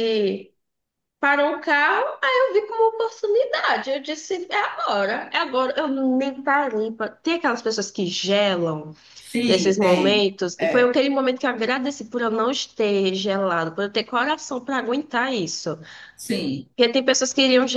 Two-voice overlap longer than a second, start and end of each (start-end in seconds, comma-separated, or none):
9.5-11.0